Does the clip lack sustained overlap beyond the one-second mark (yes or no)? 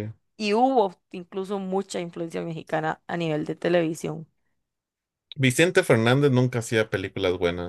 yes